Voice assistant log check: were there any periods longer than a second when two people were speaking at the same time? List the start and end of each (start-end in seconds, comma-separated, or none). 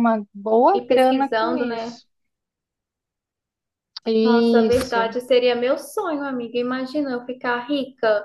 0.7-2.0